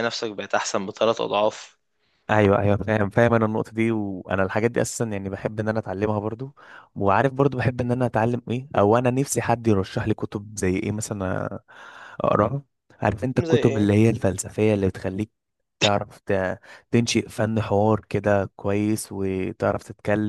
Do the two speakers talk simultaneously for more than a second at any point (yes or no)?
no